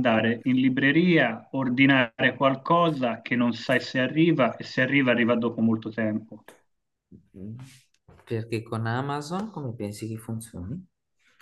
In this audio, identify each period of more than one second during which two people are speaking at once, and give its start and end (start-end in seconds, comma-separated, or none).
none